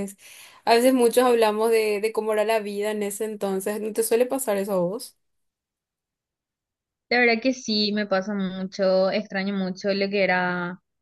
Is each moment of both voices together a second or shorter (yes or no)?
yes